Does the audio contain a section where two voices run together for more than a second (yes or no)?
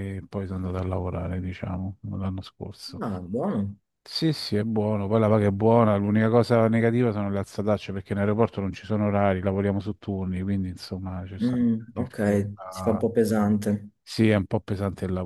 yes